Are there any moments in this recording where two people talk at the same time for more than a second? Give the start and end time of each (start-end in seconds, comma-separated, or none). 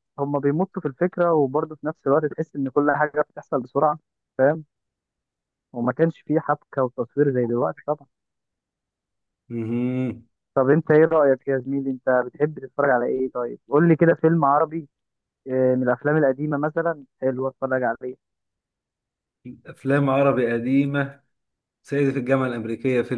none